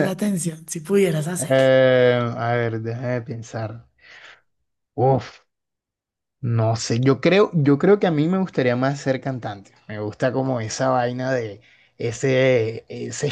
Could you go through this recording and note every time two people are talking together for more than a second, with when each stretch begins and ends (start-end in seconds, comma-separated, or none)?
none